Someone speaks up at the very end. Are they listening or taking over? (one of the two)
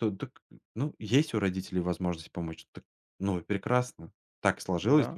listening